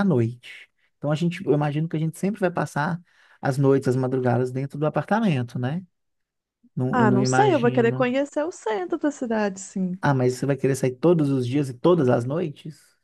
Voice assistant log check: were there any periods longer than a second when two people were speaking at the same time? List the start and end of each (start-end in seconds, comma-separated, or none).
6.9-8.1